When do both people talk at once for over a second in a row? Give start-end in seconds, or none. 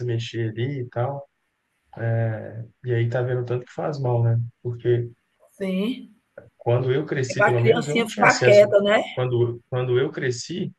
7.3-8.7